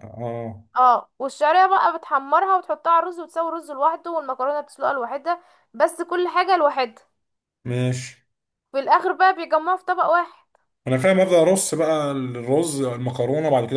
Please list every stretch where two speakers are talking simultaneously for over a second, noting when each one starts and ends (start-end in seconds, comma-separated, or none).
none